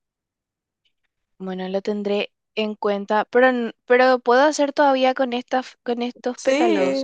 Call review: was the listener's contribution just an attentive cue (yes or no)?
no